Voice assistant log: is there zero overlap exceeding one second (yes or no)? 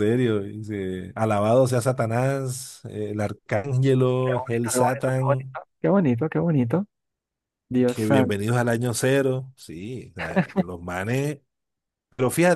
no